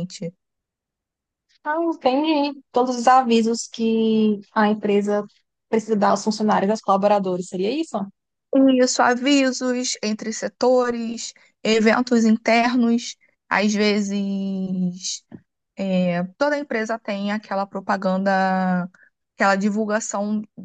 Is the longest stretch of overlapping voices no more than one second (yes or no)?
yes